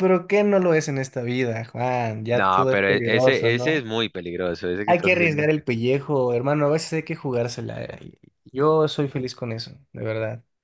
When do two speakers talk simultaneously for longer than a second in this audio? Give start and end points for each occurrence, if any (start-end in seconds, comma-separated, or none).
2.3-3.9